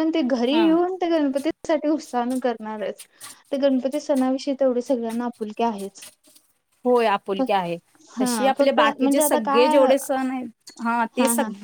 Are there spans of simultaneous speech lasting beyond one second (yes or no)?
yes